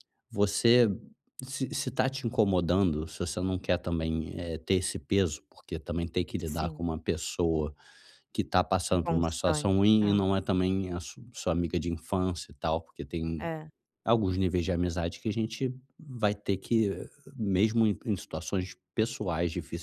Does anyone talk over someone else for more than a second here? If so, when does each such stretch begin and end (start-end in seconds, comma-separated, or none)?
8.9-10.2